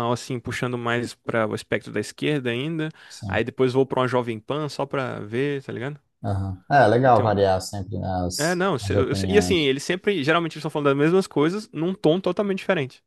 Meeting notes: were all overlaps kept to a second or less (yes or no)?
no